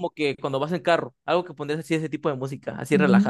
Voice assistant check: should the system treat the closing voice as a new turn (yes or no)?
yes